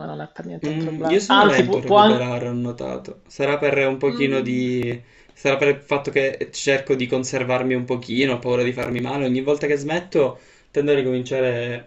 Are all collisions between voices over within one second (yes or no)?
no